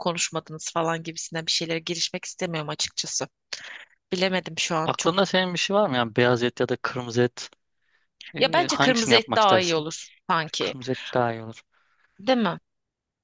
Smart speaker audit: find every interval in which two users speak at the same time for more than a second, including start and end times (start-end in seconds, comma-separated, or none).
8.4-9.8